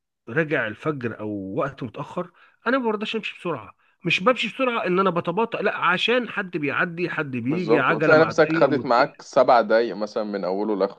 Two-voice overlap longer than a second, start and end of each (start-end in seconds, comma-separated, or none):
7.5-9.2